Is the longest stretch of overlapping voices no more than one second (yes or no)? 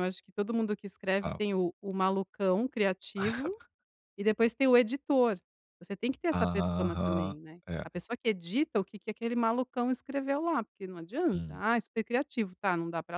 no